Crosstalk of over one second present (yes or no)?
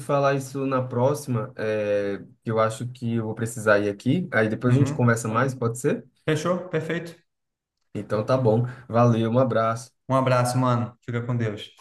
no